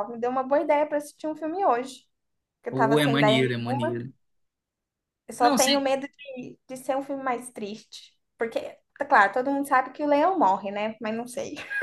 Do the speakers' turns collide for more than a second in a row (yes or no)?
yes